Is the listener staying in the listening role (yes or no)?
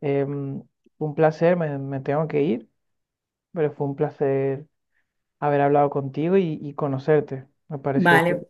yes